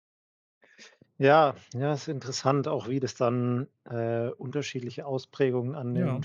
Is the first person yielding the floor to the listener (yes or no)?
no